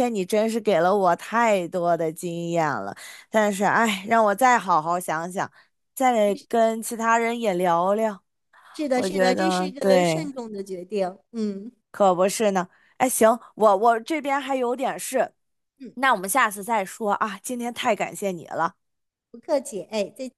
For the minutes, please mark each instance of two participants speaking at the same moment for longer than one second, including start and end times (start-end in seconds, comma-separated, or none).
8.9-10.2